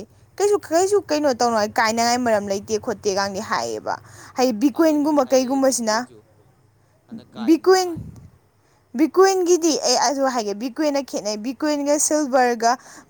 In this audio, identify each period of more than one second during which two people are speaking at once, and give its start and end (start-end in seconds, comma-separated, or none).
4.4-6.0